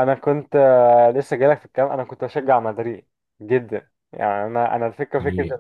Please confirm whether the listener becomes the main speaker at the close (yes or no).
no